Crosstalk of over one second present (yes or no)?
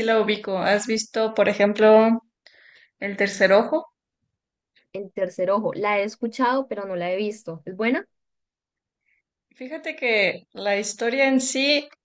no